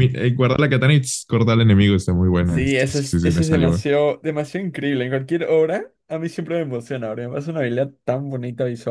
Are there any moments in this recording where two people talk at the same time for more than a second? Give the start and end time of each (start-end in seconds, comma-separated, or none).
2.4-3.8